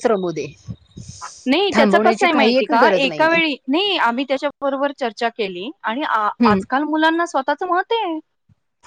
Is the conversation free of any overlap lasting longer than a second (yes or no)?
no